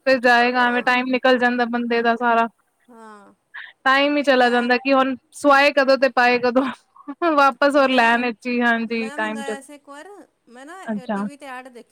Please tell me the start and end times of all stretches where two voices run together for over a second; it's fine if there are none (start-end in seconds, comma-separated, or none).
7.7-9.5